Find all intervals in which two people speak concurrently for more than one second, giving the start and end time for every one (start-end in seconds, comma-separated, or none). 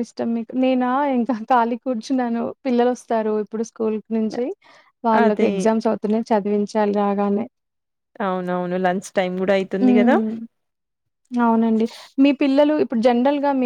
none